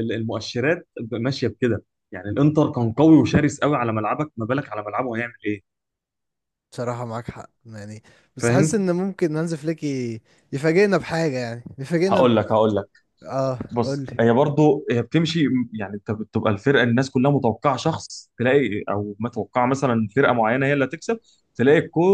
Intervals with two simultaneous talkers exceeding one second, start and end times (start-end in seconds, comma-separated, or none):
none